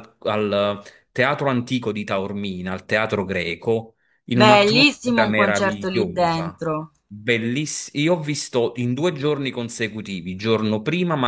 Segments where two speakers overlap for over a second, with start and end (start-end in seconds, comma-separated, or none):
4.3-6.6